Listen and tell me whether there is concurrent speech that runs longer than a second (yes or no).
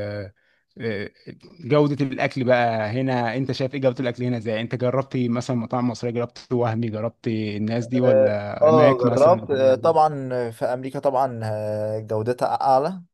yes